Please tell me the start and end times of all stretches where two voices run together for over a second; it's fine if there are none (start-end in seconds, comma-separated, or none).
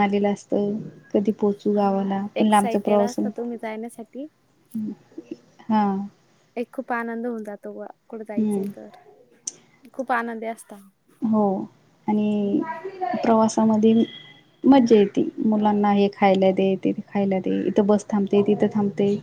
1.8-3.2